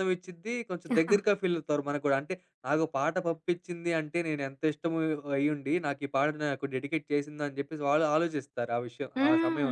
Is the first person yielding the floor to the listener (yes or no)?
yes